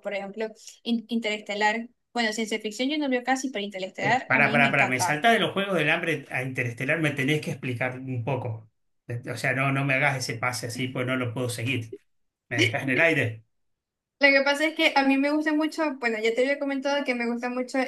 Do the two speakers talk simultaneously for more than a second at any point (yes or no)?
yes